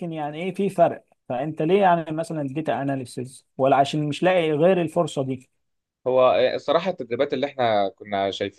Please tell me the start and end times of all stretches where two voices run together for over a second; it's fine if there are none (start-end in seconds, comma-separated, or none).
none